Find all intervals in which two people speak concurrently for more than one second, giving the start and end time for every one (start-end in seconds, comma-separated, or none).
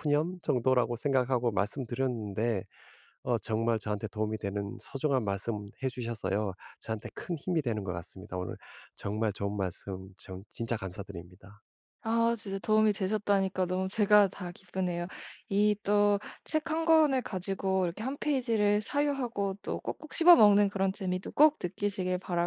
none